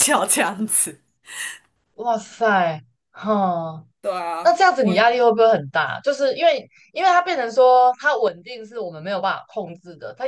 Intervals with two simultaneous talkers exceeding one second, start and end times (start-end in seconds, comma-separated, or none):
none